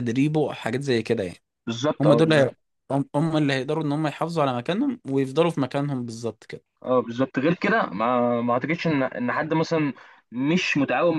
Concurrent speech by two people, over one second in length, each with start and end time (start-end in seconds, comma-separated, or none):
none